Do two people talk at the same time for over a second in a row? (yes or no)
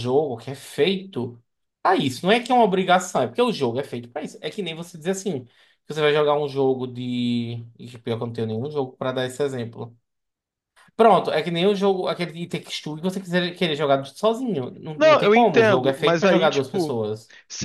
yes